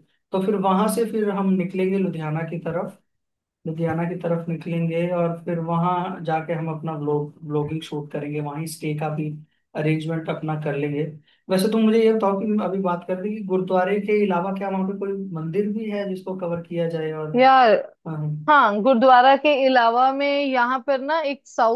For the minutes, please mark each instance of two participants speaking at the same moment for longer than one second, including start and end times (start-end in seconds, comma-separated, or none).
none